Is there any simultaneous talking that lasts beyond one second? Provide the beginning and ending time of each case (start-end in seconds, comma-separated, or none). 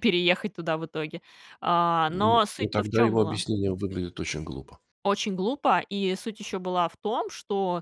2.1-3.4